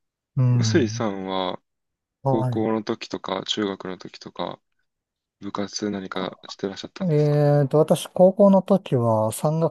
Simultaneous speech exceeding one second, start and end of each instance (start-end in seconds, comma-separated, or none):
none